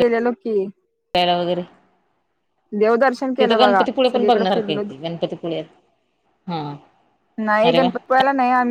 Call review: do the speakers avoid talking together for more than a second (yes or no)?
no